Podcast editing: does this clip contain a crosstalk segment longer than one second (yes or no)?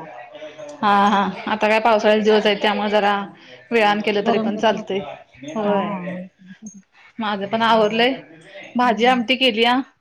no